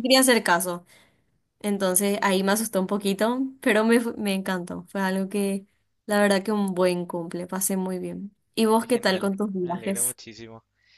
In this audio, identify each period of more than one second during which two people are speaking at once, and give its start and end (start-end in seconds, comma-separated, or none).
8.8-10.2